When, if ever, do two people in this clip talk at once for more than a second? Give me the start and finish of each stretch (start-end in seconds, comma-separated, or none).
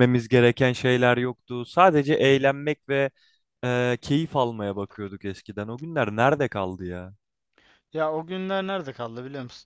none